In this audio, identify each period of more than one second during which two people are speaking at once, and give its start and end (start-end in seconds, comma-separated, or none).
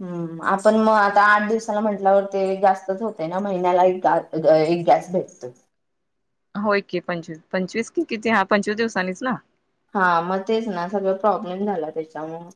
none